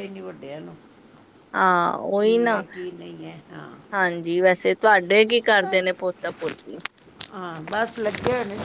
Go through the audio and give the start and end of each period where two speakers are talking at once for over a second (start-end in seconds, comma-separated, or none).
none